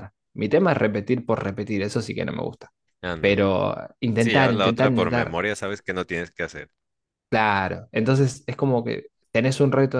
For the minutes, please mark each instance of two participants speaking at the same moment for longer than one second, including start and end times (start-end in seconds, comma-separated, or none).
4.2-5.4